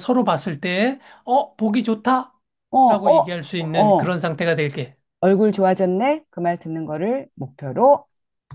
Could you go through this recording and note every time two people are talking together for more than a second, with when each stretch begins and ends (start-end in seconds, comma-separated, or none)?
2.9-4.2